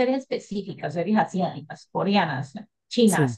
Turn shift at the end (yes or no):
no